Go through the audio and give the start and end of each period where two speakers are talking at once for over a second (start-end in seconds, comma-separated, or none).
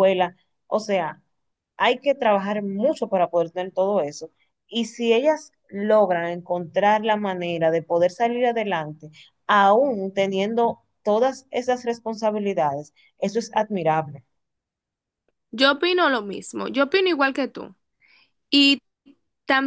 none